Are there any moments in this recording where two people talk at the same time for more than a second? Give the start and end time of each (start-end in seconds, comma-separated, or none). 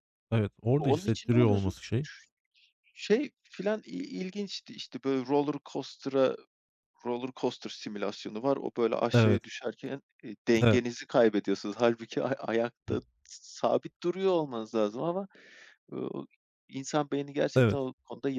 0.8-2.1